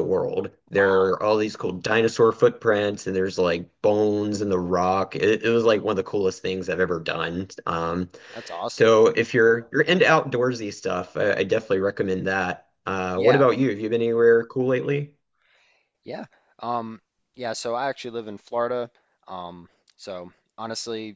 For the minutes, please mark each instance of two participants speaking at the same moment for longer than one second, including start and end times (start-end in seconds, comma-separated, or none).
none